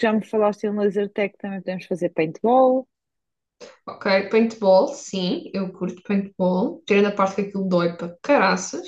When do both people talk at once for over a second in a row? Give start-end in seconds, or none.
none